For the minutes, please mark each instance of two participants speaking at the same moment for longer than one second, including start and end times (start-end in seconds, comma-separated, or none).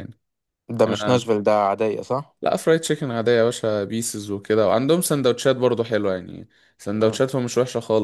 none